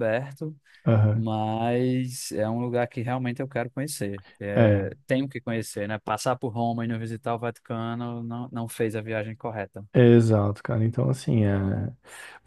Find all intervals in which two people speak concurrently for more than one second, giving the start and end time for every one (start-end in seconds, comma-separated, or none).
none